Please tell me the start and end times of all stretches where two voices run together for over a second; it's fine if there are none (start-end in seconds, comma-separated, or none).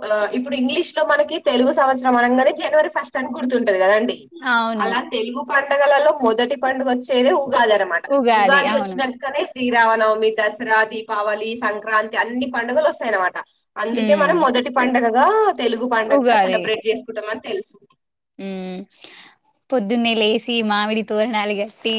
none